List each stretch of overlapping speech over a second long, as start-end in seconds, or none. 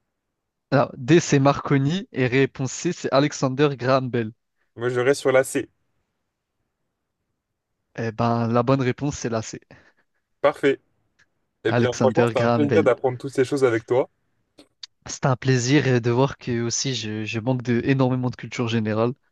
11.7-12.9